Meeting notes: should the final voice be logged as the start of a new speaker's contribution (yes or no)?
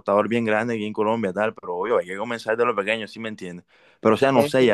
no